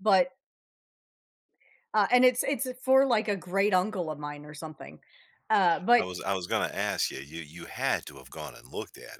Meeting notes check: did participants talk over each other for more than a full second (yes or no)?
no